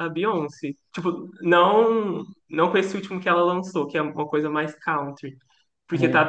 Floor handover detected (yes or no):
no